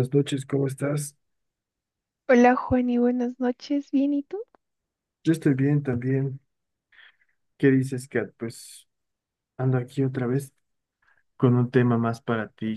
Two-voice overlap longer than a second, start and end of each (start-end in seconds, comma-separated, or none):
none